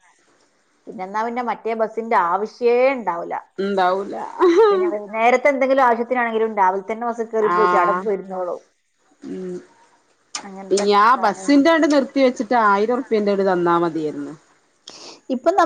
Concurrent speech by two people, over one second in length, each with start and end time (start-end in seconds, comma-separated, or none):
none